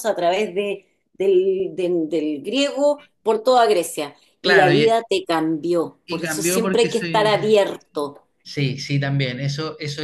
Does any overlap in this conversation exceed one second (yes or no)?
yes